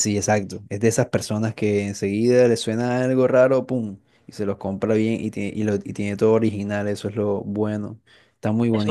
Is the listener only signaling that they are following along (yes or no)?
no